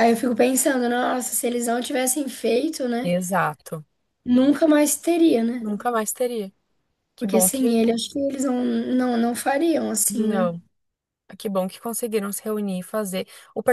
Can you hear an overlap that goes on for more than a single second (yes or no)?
no